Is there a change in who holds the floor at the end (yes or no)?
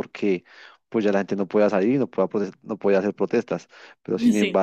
no